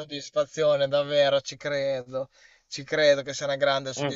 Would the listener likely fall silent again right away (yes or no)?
yes